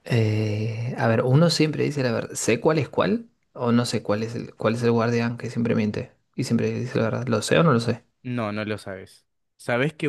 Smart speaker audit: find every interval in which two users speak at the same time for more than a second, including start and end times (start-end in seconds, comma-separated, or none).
none